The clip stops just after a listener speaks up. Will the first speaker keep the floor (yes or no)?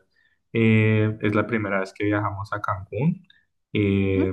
yes